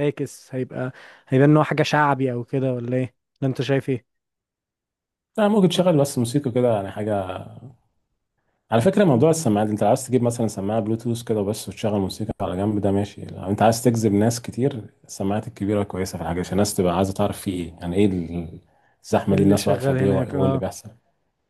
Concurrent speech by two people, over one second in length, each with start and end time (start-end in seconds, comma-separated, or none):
19.3-20.6